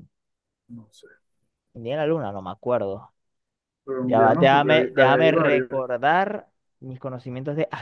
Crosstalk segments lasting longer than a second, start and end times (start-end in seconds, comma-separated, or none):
4.0-5.7